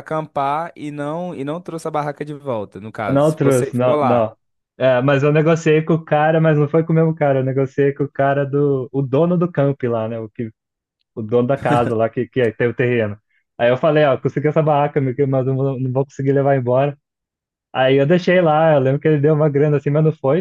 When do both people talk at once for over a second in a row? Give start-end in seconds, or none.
3.1-4.3